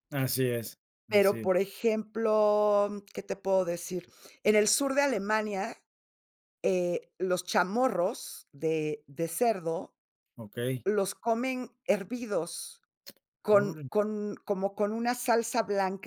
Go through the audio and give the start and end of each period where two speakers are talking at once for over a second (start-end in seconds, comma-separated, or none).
none